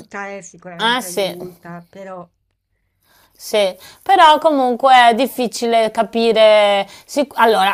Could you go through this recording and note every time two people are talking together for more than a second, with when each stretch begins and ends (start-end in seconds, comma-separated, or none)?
none